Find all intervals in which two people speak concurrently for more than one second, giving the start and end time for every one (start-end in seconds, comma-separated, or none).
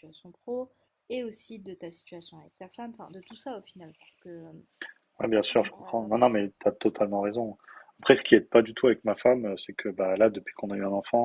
none